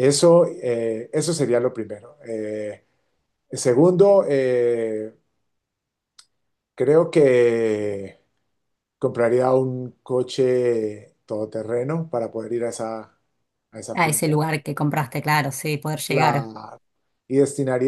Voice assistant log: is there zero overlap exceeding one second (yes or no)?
yes